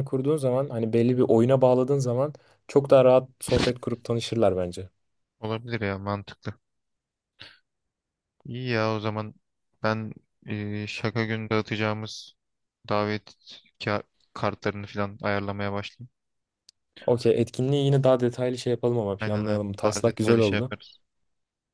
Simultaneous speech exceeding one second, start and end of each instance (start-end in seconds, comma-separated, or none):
19.2-20.7